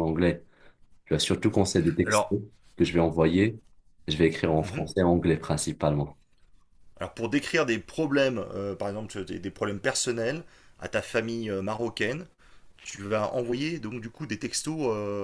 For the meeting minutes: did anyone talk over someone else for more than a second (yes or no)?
no